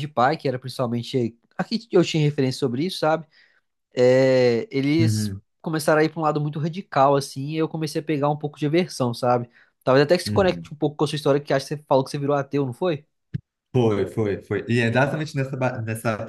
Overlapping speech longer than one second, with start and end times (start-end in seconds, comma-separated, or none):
none